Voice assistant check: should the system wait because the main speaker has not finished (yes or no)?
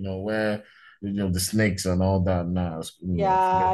no